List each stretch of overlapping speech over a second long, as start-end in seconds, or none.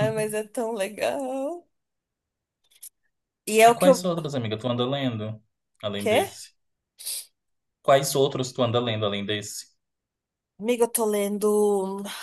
none